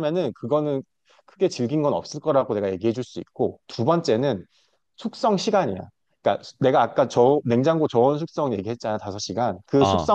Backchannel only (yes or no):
yes